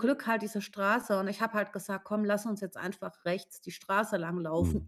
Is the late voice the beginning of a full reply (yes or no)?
yes